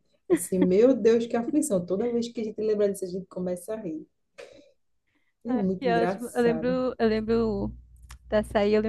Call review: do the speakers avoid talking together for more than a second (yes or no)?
no